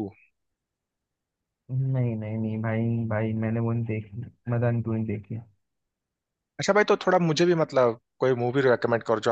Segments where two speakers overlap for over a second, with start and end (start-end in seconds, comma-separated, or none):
none